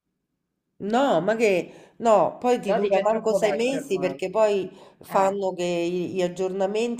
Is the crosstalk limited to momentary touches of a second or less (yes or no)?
no